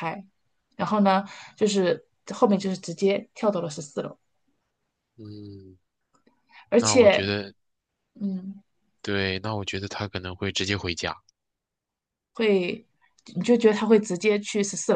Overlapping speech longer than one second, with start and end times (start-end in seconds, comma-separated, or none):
none